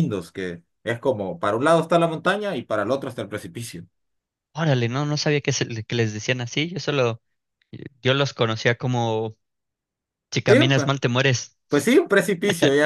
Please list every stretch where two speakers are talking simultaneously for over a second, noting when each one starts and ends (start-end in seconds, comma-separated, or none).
none